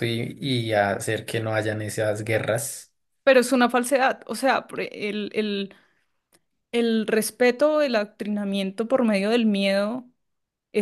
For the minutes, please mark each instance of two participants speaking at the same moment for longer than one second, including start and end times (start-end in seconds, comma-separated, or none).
none